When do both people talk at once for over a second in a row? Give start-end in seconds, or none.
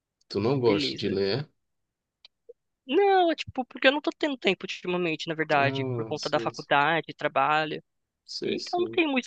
5.6-6.8